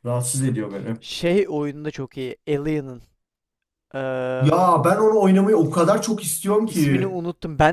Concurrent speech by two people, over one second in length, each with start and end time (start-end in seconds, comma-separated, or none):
none